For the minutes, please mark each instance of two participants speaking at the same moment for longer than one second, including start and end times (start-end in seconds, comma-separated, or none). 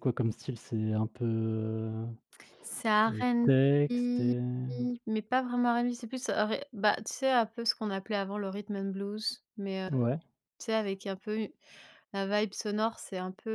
3.1-4.3